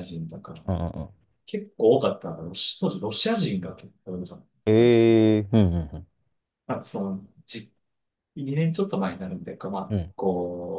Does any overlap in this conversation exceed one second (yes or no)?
no